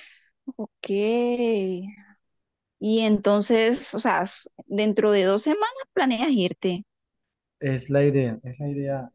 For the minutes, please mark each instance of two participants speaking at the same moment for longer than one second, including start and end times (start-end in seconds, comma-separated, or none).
none